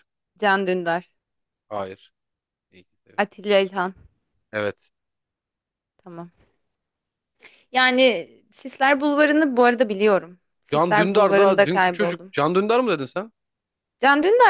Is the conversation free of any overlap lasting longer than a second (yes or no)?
no